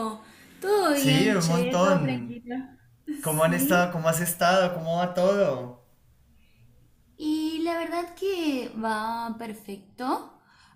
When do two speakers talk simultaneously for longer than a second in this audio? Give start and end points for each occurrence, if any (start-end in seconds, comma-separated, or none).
0.9-2.4